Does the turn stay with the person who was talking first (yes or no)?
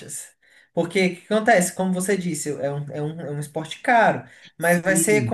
yes